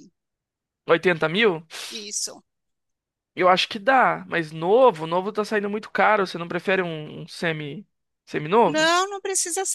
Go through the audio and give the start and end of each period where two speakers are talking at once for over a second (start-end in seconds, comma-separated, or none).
none